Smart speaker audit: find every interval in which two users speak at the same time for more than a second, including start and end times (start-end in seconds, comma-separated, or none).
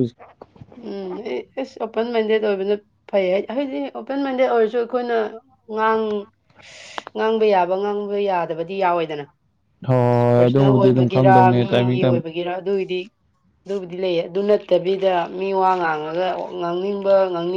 10.3-12.2